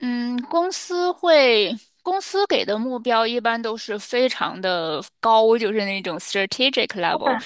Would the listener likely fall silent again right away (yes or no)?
no